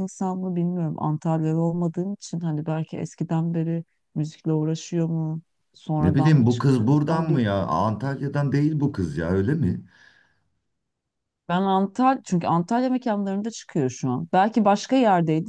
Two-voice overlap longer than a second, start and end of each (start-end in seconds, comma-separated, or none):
6.0-7.4